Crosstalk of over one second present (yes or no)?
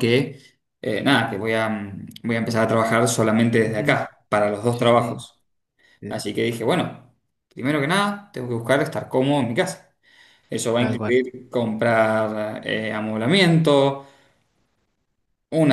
no